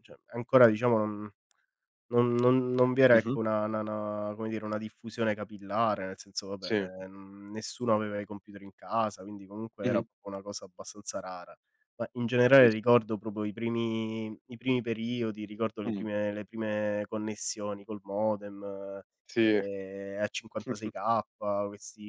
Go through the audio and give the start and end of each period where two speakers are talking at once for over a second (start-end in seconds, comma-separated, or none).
none